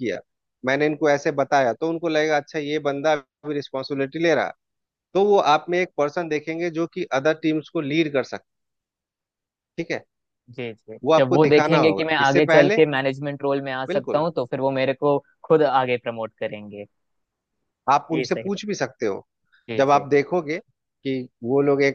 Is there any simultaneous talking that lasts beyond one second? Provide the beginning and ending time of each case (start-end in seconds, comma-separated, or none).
11.0-12.8